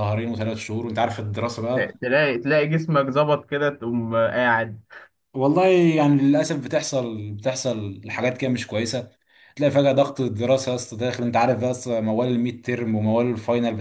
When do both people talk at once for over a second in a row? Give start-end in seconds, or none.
none